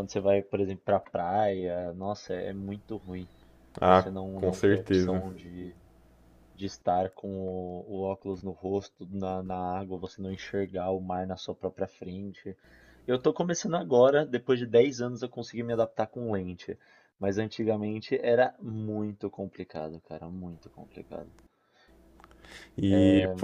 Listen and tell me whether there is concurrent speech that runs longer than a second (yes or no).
yes